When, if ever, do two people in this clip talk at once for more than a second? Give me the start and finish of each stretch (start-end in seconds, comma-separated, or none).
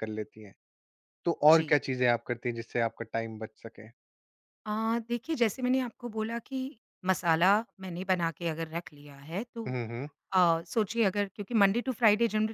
none